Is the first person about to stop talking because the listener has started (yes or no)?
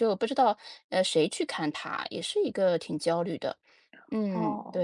yes